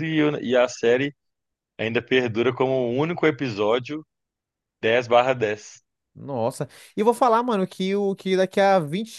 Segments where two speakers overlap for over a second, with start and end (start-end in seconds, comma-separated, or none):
none